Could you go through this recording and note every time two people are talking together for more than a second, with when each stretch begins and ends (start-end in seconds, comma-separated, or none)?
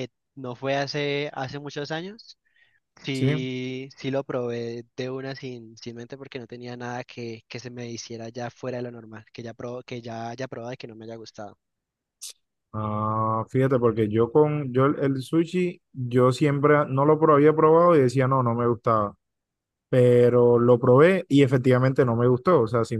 none